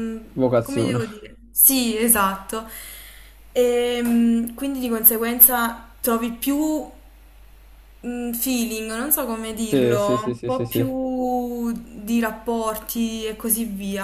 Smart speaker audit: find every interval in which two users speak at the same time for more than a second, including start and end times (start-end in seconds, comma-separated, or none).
9.6-11.0